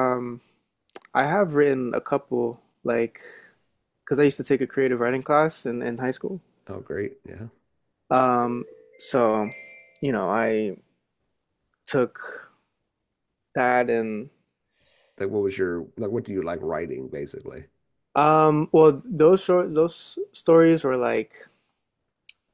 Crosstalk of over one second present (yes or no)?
no